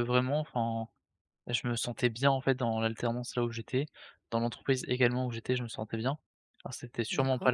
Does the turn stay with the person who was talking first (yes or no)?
yes